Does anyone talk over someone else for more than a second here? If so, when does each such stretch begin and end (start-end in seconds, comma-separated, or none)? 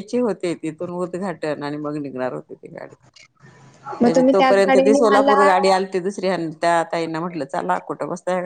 4.0-5.7